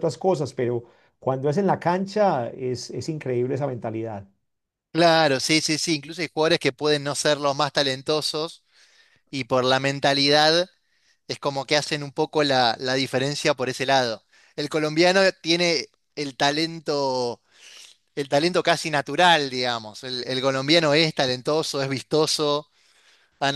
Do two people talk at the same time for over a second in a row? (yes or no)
no